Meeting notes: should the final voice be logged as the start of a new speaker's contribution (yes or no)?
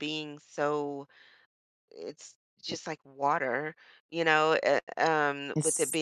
no